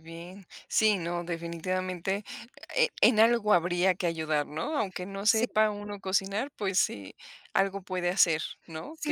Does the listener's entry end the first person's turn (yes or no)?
yes